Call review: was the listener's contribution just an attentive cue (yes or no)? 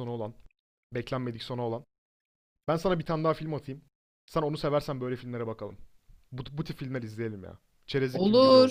no